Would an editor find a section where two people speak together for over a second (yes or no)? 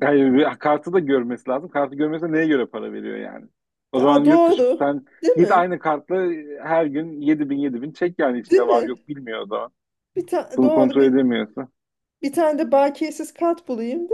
yes